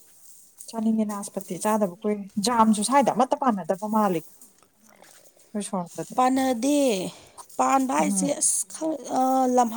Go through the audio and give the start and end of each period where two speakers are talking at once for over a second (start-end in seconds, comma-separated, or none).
none